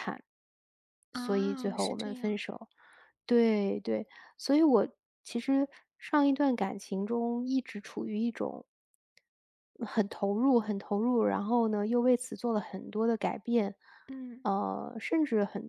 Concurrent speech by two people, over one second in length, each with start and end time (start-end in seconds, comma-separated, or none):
1.1-2.4